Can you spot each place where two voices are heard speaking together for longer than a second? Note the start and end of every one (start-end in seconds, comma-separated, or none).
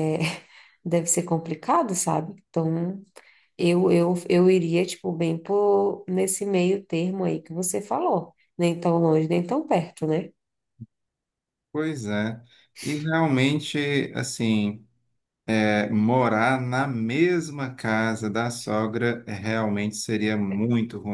none